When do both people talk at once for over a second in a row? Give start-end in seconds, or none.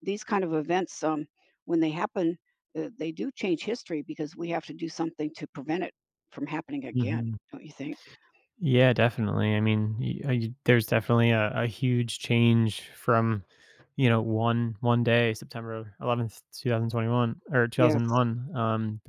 none